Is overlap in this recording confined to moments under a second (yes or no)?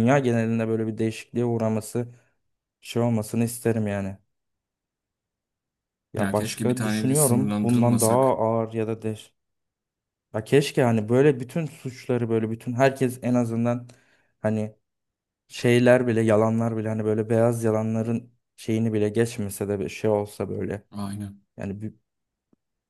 no